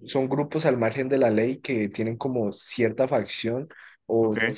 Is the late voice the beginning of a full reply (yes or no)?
no